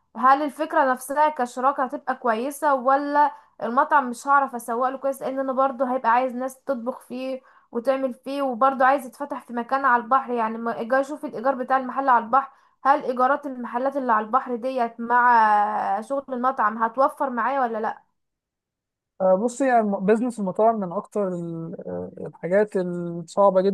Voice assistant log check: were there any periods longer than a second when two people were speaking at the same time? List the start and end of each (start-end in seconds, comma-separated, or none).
none